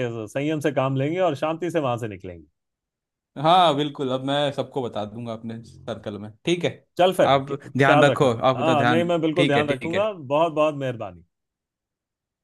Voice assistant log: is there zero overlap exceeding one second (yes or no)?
no